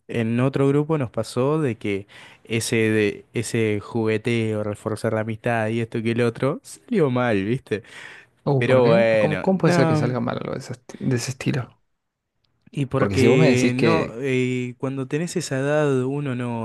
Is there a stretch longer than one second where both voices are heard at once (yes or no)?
yes